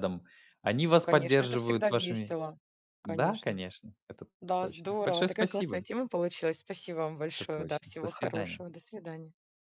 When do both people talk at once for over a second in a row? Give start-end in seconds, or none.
1.0-2.3, 4.4-5.8, 7.3-8.6